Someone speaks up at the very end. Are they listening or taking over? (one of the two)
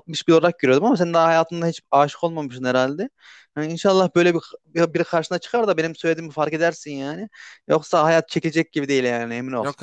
taking over